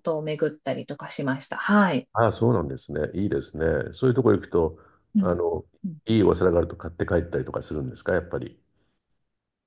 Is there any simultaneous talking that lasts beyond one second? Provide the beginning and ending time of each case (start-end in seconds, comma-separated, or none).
none